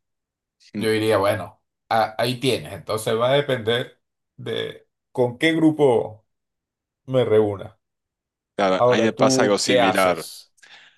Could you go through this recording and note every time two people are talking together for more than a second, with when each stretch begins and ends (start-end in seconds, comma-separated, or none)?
8.8-10.3